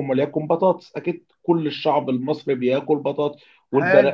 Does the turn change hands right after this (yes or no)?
no